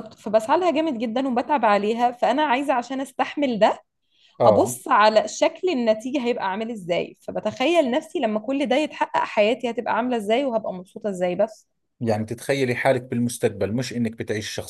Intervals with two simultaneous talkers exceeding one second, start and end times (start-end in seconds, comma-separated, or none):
none